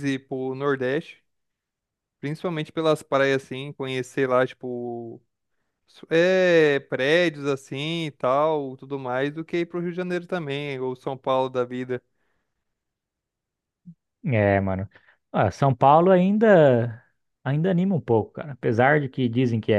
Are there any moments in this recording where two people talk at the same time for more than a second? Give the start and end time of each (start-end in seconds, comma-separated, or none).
none